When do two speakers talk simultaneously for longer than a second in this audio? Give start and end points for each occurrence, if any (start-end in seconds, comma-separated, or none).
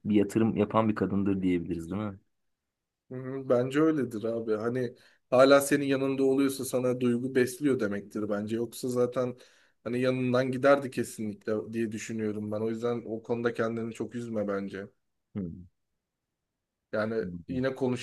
none